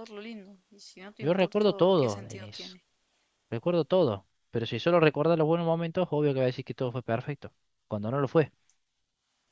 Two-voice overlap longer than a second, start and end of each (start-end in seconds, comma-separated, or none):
1.2-2.8